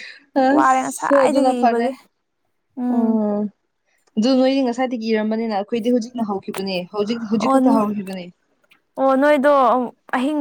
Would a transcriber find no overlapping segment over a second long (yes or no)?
no